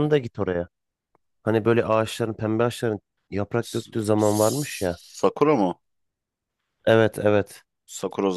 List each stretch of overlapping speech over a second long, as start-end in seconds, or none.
3.6-5.0